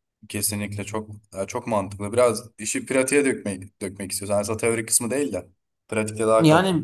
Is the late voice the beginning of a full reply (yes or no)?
yes